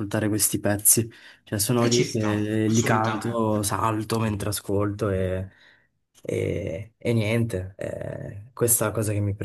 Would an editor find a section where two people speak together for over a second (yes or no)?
yes